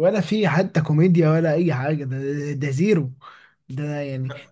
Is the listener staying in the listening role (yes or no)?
yes